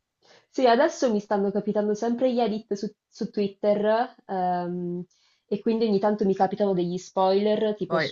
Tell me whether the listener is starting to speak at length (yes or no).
no